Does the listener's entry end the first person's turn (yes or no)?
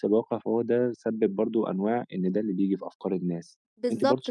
yes